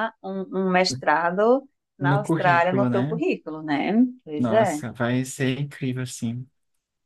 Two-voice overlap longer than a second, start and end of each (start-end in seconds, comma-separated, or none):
2.0-3.2